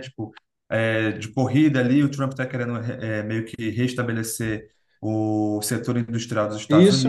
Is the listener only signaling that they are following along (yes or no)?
no